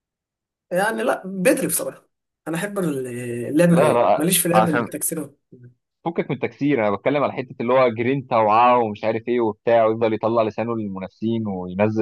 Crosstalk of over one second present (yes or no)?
yes